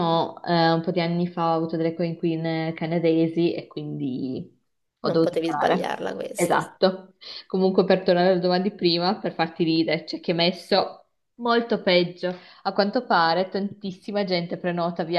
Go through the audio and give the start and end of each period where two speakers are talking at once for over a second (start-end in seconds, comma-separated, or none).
5.0-6.7